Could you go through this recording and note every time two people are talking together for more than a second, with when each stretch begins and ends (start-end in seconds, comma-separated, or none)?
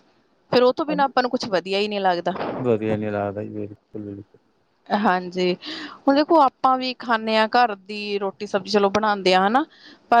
none